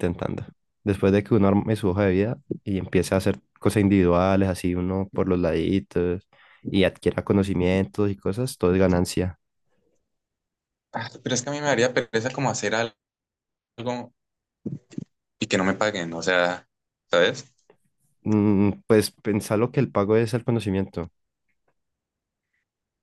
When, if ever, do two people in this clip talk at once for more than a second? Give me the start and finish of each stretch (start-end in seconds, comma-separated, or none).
none